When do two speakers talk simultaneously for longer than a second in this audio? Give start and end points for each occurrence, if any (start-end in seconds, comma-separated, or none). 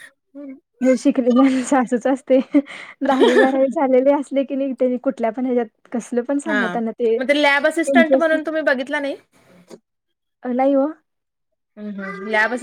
none